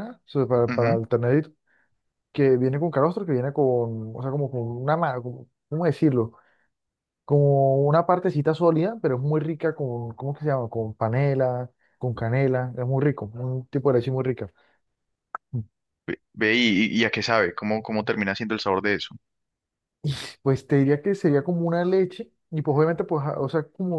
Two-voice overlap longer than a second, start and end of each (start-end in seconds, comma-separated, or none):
none